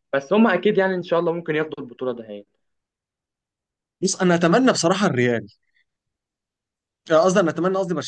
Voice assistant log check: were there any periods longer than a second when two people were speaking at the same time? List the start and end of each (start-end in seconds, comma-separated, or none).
none